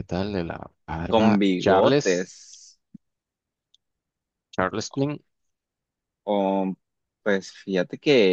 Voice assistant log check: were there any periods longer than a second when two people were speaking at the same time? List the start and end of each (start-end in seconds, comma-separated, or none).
1.1-2.3